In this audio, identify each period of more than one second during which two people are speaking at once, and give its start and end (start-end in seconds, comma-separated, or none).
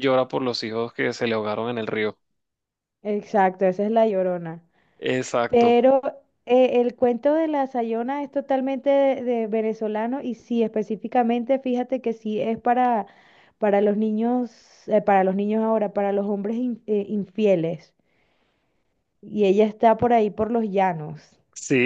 none